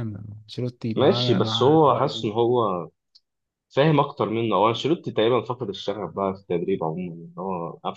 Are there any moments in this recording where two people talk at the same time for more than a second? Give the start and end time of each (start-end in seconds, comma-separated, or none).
0.9-2.3